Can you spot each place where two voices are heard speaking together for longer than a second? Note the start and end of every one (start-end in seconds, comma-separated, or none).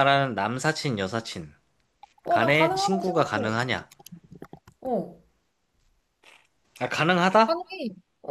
2.3-3.6